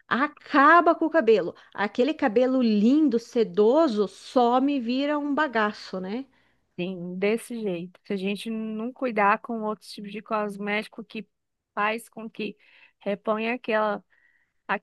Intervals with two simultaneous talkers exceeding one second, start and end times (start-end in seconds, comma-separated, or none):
none